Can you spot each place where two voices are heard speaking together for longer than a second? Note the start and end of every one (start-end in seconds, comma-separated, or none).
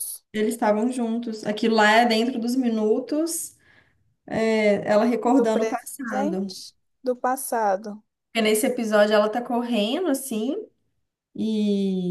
5.2-6.5